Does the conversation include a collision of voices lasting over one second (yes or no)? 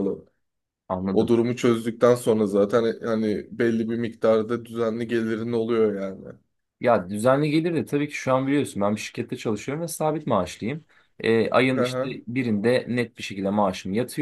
no